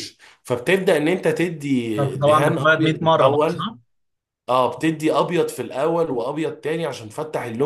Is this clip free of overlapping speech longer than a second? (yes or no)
no